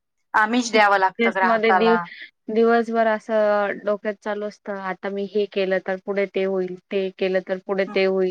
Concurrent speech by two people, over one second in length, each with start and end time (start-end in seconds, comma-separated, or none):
0.8-1.9